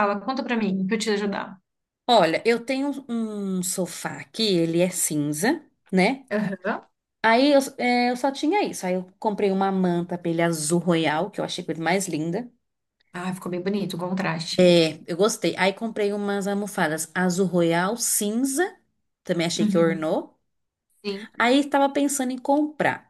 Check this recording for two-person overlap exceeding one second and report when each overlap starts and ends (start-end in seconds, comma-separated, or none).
none